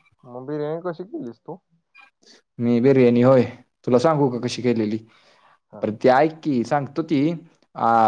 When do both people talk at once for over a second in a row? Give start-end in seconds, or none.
none